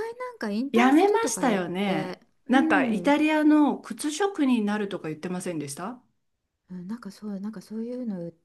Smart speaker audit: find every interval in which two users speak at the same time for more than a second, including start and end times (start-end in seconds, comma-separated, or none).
0.7-3.1